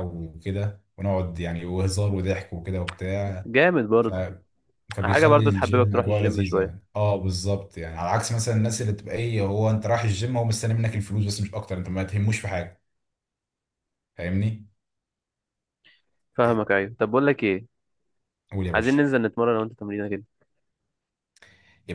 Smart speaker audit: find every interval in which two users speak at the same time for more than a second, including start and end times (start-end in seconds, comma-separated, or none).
5.0-6.7